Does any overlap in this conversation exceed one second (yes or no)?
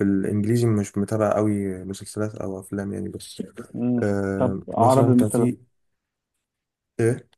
yes